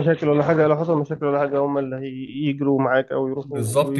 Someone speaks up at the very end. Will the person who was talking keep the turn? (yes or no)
no